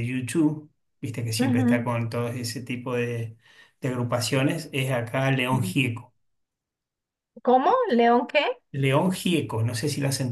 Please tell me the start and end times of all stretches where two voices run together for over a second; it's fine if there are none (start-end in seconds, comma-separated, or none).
none